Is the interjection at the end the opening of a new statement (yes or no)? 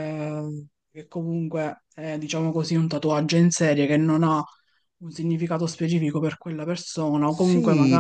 yes